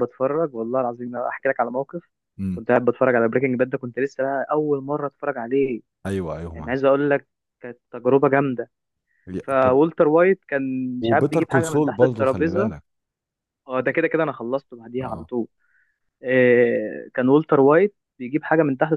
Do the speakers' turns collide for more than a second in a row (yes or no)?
yes